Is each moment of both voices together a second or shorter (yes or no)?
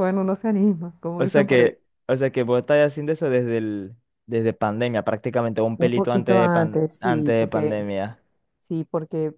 no